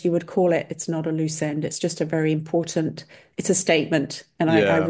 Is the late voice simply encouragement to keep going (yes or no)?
yes